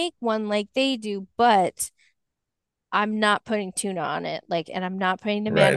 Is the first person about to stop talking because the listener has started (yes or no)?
yes